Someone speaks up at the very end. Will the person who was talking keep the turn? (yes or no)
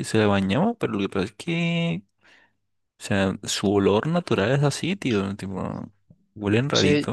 no